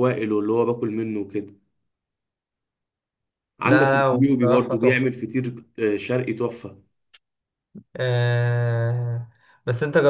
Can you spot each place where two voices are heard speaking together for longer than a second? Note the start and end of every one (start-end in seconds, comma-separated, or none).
3.6-5.1